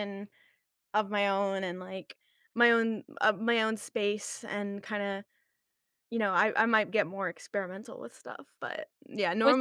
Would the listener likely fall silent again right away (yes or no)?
yes